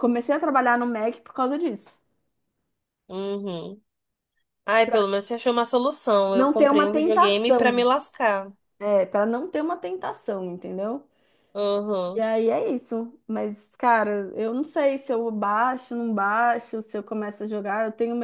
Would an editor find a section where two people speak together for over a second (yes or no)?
yes